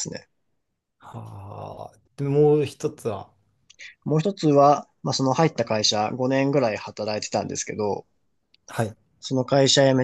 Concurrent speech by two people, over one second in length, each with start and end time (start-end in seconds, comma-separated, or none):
none